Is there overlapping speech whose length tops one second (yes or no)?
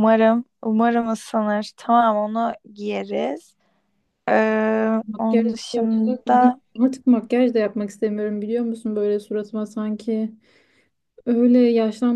yes